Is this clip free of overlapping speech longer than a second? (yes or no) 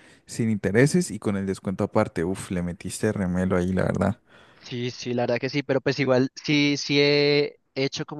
yes